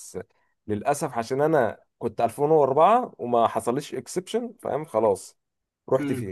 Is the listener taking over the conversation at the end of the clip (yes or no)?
yes